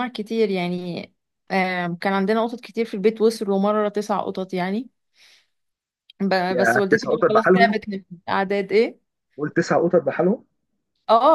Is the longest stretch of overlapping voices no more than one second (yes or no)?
no